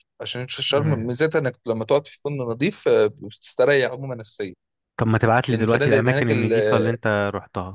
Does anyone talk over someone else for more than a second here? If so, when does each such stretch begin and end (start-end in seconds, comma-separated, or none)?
5.5-6.9